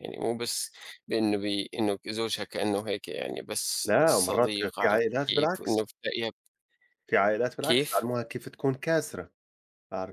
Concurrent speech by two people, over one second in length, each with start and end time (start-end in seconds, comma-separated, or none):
3.9-5.8